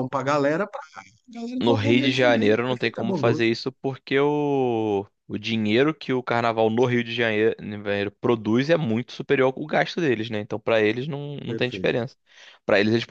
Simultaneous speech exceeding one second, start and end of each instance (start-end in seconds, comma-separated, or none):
1.6-3.5